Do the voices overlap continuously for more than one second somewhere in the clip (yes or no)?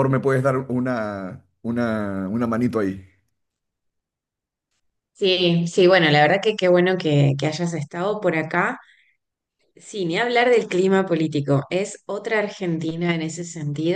no